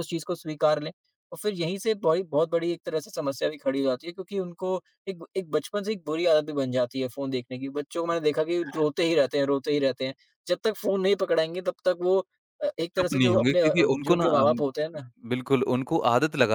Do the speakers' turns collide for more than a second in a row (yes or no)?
yes